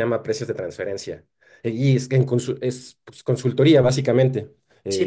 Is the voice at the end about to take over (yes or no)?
yes